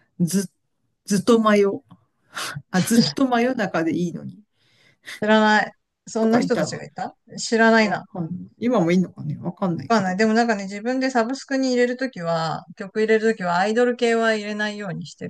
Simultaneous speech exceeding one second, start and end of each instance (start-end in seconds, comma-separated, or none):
none